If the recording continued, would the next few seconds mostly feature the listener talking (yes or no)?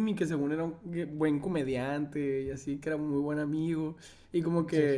no